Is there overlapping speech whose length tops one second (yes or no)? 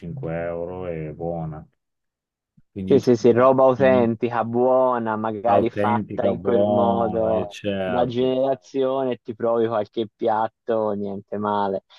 yes